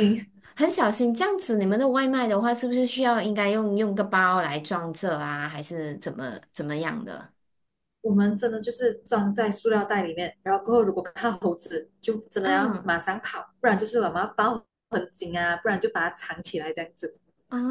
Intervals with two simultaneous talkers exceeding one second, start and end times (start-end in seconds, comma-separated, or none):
none